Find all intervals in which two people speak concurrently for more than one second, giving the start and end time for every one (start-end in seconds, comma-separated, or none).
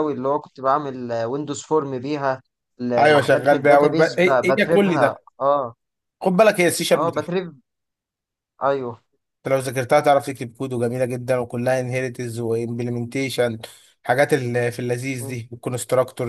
3.0-5.2